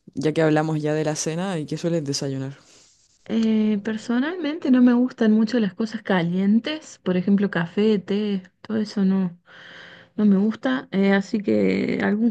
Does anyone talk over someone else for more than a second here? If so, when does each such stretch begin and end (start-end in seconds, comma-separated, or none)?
none